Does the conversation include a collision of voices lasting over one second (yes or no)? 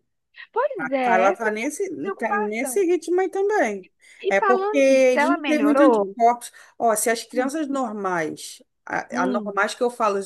yes